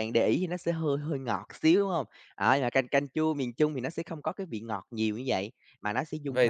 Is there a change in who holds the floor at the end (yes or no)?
yes